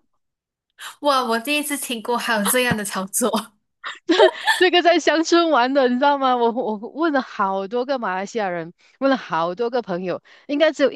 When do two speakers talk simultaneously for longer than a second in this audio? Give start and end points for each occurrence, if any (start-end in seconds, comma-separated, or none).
none